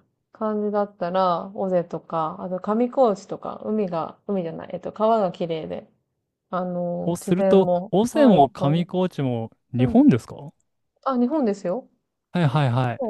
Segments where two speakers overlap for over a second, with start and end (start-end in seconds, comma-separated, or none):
7.0-8.9